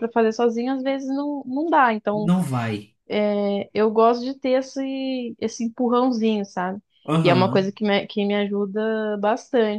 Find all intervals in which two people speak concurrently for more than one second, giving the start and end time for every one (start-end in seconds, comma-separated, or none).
none